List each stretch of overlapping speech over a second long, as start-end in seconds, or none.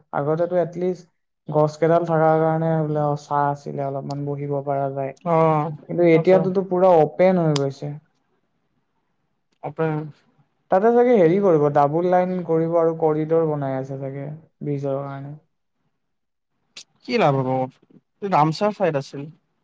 none